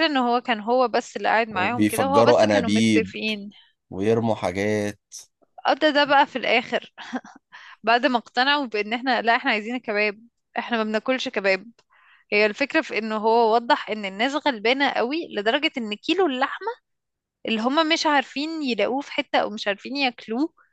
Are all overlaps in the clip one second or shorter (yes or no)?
no